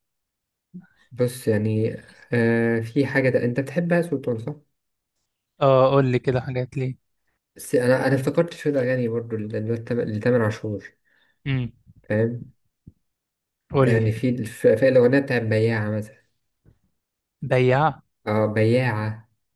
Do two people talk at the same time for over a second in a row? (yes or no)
no